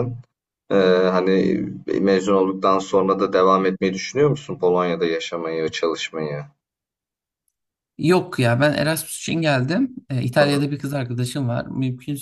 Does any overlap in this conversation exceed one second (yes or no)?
no